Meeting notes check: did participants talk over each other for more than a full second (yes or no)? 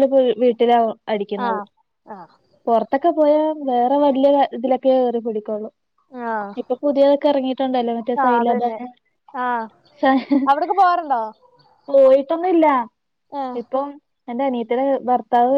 no